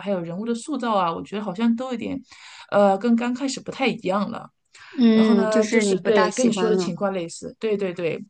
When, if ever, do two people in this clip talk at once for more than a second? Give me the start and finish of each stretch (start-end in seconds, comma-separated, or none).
5.1-6.9